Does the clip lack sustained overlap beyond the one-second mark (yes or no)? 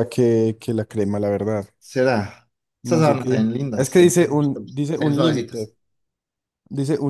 no